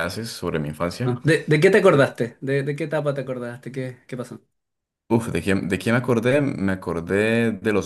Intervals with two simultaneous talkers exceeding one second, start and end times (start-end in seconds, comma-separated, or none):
none